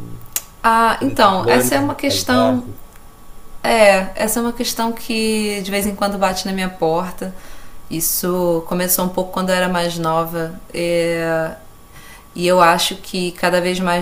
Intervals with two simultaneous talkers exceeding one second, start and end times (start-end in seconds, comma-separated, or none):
0.9-2.6